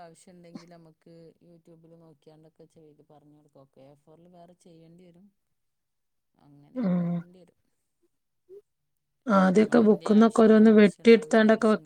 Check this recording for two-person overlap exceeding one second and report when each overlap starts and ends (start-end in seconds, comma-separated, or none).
9.9-11.3